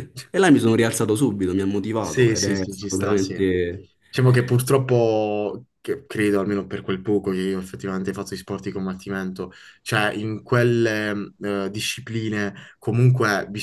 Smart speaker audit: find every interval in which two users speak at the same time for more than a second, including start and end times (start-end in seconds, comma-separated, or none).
2.0-3.4